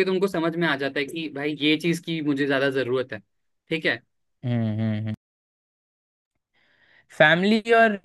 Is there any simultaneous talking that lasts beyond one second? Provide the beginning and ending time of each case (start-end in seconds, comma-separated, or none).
none